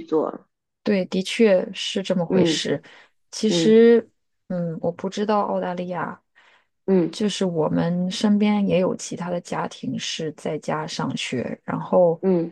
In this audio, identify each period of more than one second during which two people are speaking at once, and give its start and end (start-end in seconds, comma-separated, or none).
none